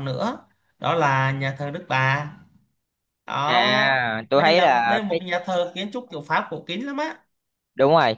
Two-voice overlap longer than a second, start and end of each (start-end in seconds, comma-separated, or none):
3.4-5.2